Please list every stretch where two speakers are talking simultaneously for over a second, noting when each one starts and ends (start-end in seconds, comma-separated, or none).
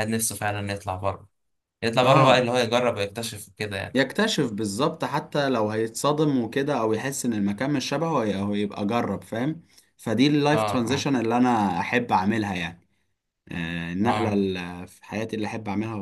none